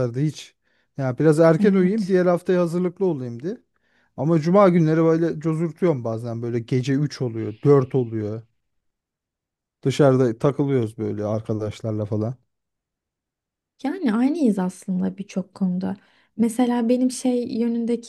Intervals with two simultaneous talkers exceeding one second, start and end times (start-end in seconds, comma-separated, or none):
none